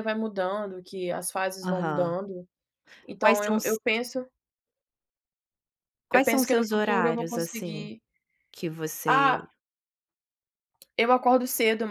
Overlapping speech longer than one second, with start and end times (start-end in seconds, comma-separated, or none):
6.1-7.9